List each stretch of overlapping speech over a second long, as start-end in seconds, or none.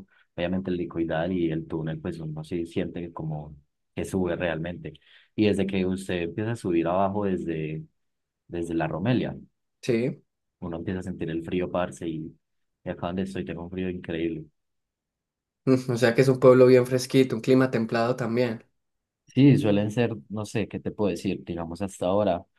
none